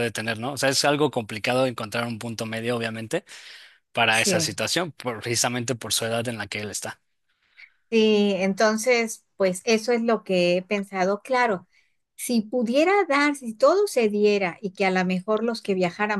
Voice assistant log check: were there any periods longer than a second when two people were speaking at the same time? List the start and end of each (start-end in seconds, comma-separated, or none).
none